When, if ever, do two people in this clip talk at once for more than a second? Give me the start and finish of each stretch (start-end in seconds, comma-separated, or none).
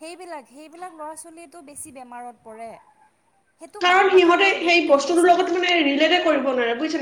3.8-5.5